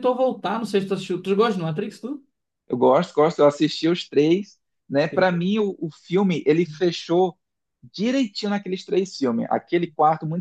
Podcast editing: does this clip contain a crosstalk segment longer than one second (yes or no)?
no